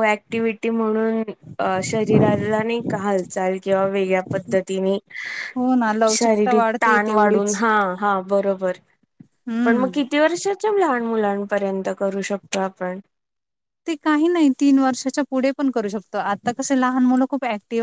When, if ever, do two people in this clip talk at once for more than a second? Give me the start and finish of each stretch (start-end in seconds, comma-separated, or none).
6.2-7.6